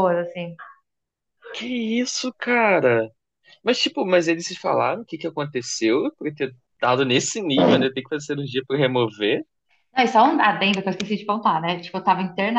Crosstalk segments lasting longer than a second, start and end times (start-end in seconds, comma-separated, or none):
none